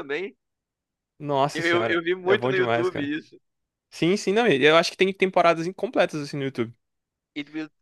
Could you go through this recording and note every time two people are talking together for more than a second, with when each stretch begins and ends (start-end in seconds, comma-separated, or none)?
1.5-3.1